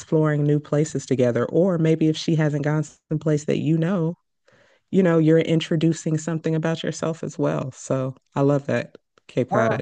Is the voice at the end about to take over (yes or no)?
yes